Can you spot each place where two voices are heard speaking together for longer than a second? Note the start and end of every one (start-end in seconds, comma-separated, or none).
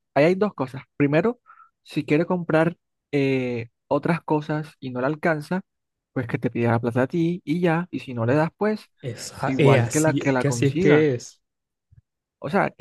9.4-11.1